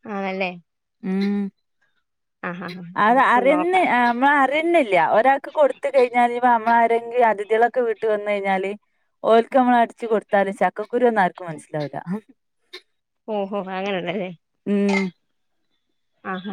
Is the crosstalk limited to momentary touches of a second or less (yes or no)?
yes